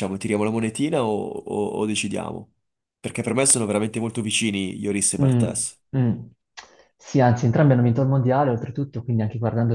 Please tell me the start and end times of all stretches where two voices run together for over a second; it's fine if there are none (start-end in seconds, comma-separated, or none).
none